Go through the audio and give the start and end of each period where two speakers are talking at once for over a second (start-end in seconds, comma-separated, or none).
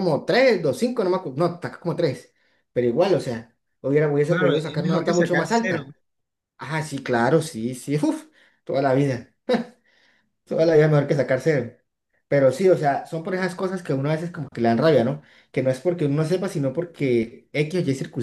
4.3-5.8